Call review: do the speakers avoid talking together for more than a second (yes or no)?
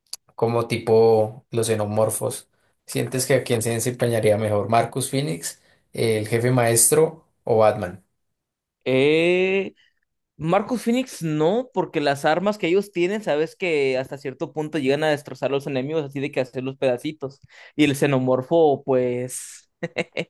yes